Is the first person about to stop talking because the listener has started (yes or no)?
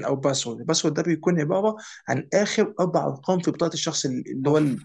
yes